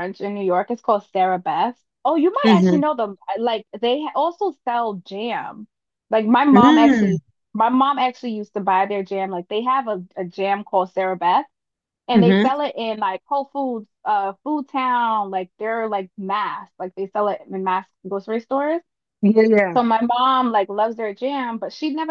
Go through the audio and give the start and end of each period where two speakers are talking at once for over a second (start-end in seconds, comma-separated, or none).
none